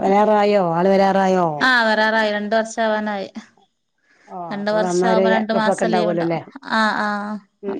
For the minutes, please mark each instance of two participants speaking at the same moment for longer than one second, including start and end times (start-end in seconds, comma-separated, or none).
4.5-6.4